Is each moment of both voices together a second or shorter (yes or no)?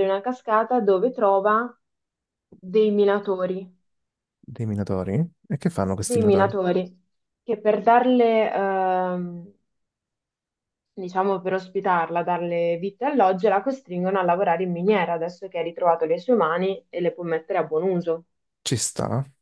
yes